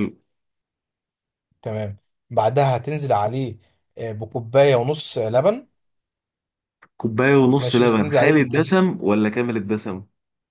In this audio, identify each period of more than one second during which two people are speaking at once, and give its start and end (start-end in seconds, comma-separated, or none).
7.6-8.8